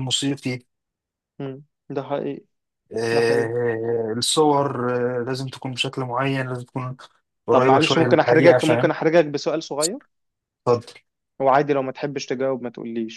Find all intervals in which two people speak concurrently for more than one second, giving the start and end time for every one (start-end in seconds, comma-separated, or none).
7.5-8.9